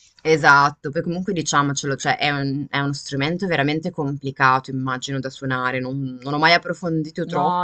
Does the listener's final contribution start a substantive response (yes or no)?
yes